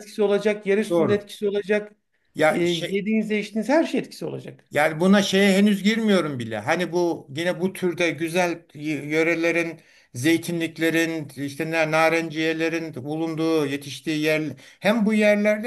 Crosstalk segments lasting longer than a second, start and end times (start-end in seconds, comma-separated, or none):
none